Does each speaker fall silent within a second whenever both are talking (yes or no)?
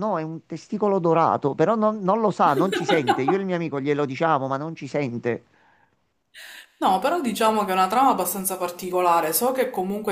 yes